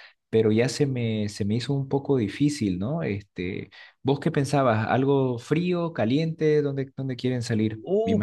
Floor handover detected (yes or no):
yes